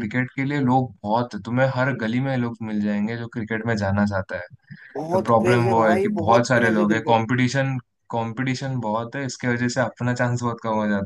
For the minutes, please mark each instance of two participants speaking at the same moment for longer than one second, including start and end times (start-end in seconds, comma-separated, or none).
5.1-7.2